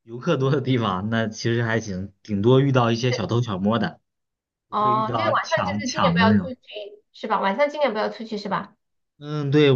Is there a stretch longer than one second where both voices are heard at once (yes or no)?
yes